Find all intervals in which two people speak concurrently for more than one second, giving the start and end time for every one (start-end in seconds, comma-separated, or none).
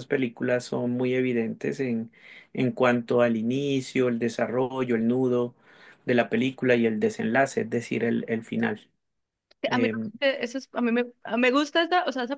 none